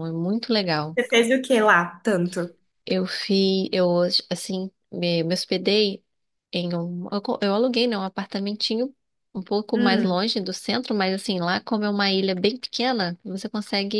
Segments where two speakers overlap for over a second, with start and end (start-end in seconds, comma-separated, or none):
none